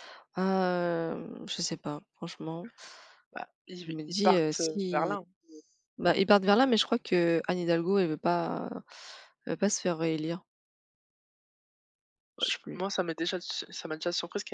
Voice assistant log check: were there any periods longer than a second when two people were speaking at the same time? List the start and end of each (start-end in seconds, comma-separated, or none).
3.9-5.1